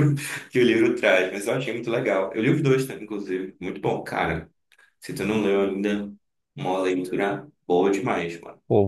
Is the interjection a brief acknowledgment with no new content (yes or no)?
no